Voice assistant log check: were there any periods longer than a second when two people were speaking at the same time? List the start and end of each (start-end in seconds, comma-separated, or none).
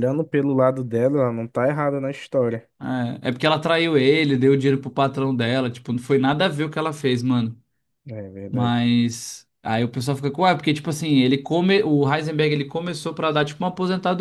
none